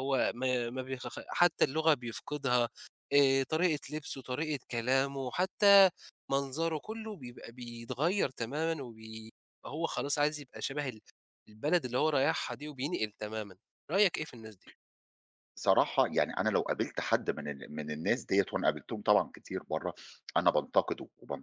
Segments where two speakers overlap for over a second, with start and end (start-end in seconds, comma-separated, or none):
none